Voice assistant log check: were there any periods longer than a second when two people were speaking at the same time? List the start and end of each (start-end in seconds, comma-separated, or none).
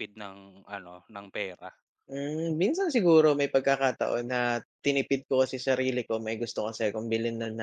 none